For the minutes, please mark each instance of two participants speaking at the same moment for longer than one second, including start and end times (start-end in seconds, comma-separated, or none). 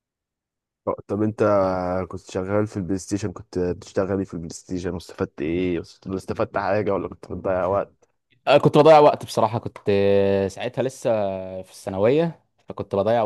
none